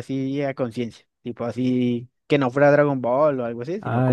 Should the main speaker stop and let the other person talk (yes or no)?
yes